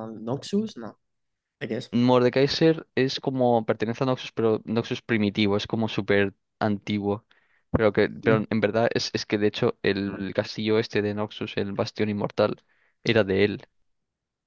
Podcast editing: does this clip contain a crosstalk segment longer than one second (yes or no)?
no